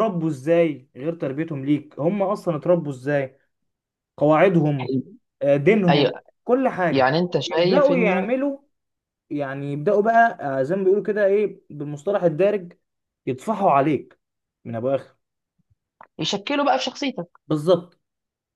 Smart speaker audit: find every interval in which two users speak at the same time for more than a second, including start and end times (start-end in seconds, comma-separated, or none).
6.9-8.4